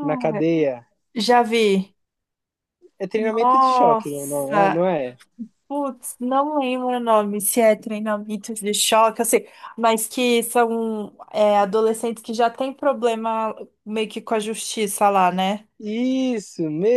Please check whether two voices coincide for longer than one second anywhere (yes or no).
yes